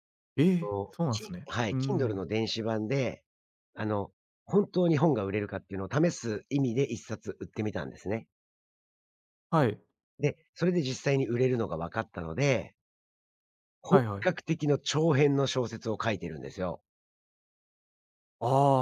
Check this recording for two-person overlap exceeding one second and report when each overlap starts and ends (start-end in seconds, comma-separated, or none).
0.6-2.2